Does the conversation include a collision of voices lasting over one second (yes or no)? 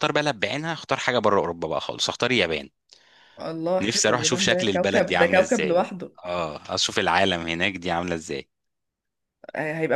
yes